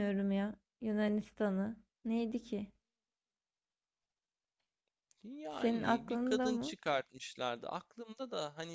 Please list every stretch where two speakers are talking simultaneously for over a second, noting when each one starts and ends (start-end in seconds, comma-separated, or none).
5.5-6.8